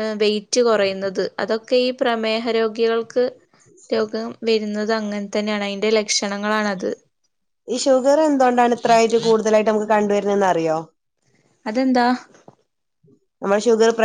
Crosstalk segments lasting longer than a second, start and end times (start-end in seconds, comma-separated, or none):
none